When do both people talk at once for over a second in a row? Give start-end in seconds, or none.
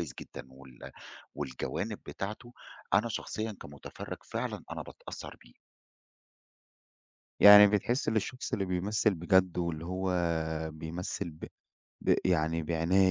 none